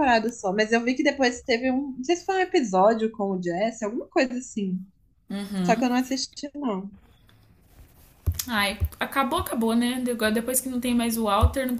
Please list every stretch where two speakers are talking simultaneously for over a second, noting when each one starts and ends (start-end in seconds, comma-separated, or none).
none